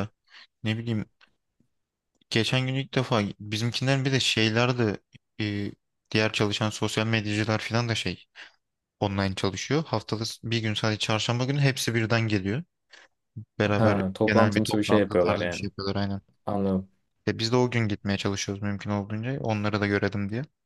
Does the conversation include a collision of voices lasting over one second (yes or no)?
yes